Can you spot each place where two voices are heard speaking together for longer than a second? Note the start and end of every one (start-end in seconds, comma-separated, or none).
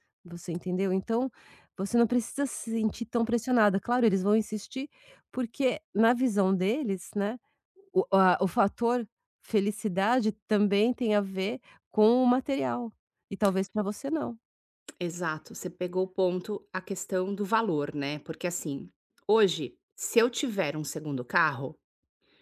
none